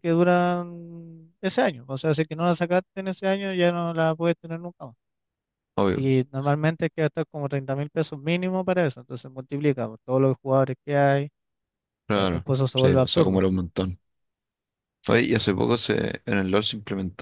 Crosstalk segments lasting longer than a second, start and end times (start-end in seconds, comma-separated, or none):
12.1-13.4